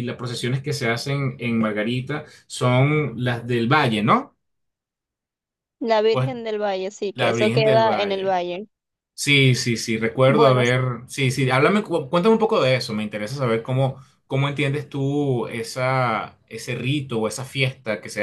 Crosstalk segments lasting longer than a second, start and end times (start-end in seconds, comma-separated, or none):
7.1-8.4